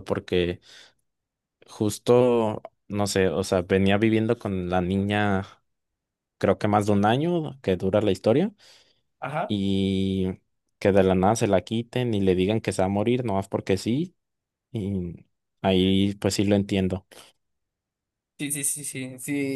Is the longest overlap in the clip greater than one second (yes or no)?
no